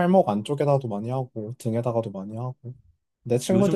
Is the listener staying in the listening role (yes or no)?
no